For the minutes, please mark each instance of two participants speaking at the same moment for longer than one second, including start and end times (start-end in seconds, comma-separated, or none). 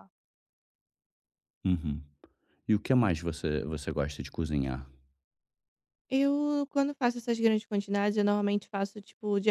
none